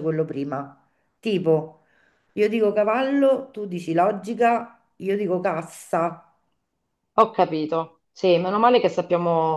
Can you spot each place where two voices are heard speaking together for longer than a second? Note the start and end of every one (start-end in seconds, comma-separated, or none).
none